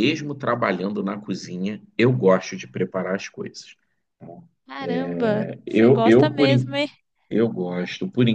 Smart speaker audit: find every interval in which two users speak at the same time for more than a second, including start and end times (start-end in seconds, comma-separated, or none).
5.1-6.8